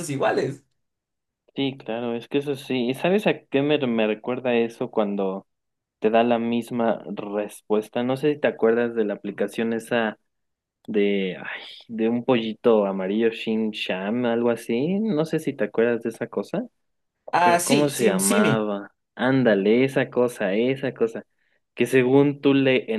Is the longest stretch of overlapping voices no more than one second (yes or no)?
no